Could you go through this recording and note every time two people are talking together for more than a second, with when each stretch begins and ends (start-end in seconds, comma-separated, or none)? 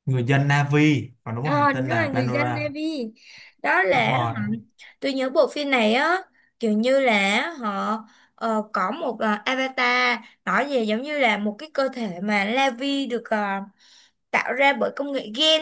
1.5-2.7